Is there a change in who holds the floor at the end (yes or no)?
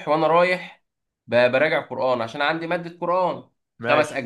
no